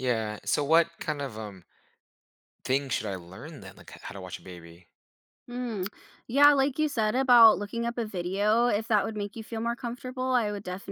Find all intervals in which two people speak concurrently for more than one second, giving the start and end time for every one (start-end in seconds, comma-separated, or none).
none